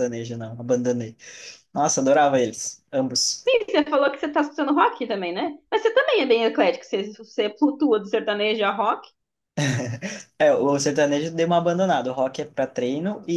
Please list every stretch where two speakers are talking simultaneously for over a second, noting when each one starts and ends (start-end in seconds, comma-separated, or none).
none